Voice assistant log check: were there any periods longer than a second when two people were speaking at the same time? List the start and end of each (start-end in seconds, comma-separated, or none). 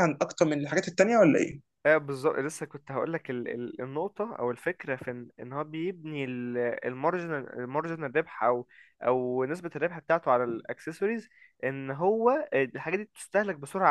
none